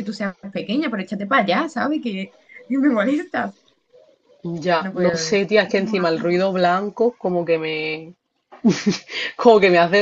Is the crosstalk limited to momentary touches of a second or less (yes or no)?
no